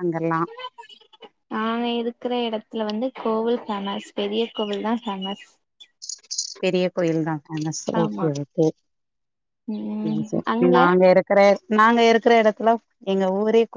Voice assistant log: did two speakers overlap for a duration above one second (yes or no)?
no